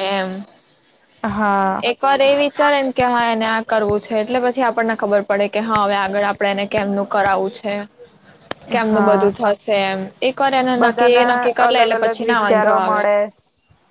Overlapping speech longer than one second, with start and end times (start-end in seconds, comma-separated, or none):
10.8-13.0